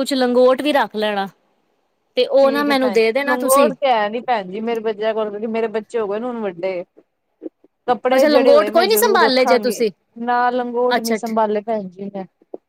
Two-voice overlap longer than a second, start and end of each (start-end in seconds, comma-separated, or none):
8.1-9.8